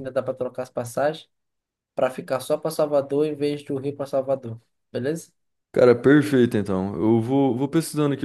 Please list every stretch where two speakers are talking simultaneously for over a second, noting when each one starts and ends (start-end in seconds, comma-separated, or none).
none